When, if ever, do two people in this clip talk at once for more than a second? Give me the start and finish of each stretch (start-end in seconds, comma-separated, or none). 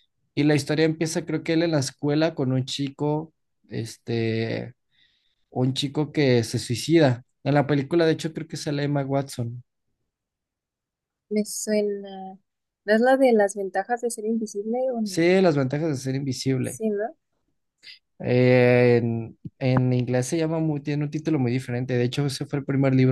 none